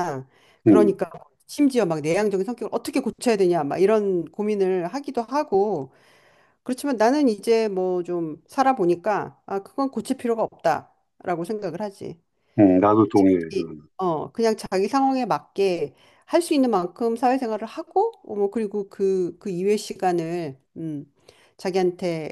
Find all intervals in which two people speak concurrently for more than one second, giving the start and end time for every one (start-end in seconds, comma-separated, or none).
none